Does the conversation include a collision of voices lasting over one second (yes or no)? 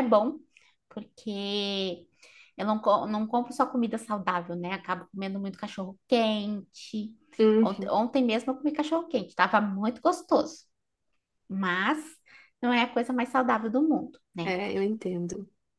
no